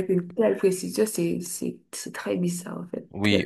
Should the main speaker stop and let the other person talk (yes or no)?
yes